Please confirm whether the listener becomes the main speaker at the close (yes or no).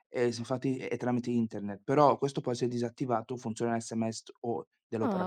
yes